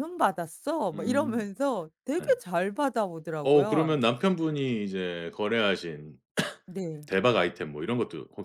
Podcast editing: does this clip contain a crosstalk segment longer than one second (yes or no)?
no